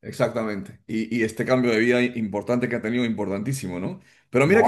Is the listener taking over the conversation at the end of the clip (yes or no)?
no